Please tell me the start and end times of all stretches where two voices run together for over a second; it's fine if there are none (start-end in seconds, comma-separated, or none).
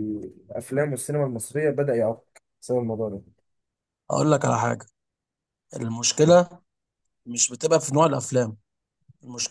none